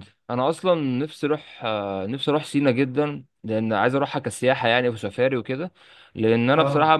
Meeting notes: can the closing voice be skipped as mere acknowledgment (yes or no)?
yes